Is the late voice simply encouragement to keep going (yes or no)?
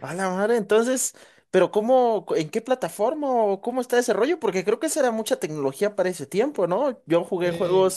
yes